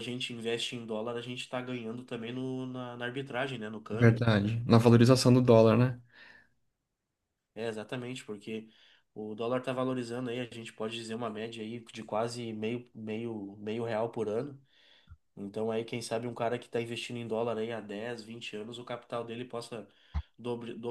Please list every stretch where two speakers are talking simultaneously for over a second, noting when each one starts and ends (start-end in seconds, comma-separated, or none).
none